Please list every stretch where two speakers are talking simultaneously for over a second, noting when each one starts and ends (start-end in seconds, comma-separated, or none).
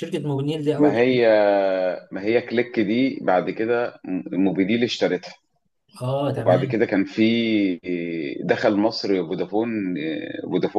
none